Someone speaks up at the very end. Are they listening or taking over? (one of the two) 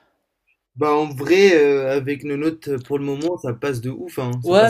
taking over